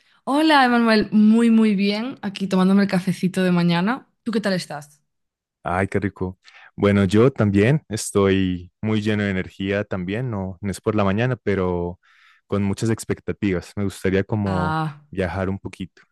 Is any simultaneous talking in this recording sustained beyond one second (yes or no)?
no